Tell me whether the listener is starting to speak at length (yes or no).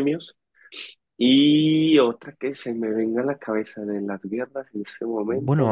yes